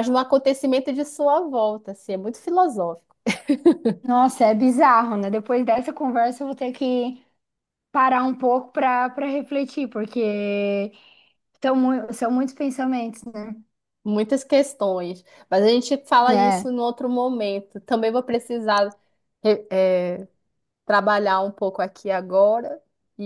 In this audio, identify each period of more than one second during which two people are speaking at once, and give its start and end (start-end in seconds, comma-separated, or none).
none